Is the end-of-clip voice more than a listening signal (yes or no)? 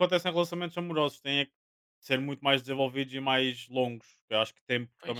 no